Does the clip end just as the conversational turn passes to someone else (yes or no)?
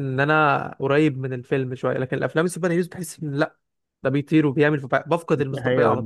yes